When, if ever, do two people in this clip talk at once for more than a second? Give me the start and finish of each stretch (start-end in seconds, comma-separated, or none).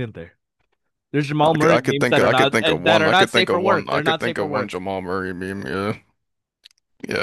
1.4-4.7